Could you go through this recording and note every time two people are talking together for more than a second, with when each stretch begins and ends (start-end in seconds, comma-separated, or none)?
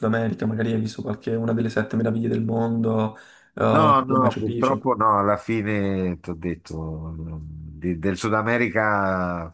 3.6-4.9